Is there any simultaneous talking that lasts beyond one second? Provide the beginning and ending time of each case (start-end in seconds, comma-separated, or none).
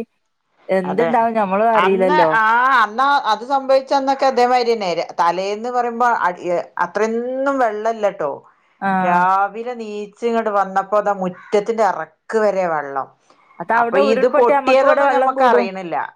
13.8-15.7